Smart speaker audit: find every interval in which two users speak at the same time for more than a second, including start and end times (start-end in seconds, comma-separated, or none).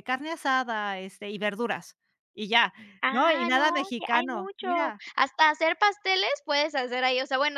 3.1-5.0